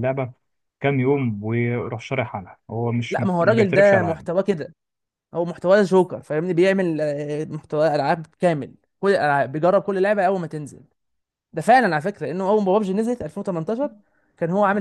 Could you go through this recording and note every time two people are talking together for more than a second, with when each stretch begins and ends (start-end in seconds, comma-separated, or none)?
3.1-4.3